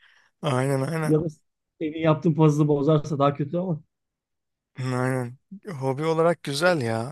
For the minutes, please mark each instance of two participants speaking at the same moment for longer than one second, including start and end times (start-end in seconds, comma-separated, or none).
none